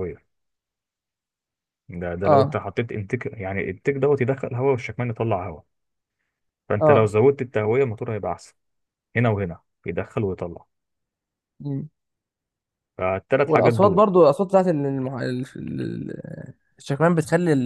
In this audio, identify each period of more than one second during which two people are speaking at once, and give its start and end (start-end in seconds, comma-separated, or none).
none